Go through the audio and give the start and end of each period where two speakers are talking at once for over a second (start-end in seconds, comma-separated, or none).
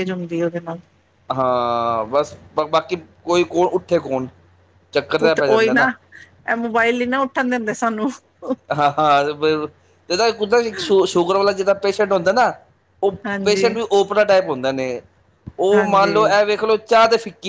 none